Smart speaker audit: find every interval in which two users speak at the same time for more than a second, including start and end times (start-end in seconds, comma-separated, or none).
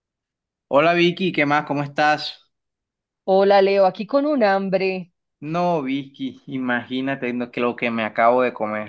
none